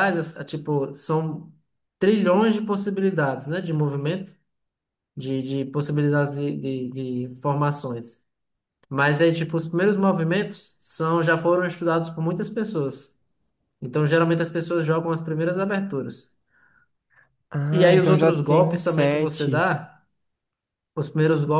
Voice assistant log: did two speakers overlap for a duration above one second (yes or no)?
yes